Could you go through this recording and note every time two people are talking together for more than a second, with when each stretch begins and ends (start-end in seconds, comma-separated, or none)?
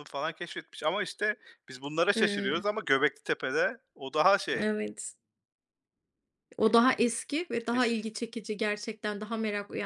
none